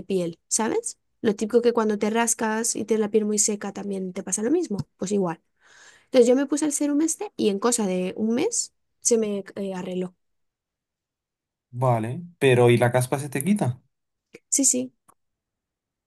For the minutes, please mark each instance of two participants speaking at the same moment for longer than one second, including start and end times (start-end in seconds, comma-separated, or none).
none